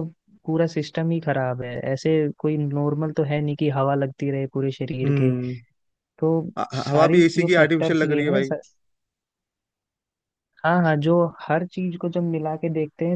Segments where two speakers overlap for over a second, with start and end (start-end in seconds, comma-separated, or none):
6.9-8.5